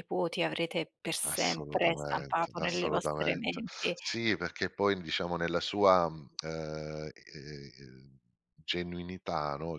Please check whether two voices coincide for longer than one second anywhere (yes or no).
yes